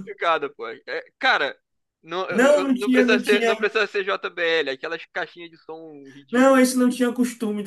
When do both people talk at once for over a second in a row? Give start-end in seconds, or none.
2.3-3.5